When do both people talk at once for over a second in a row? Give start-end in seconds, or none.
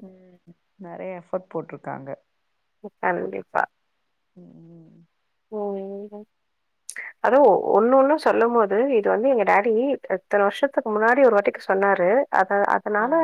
none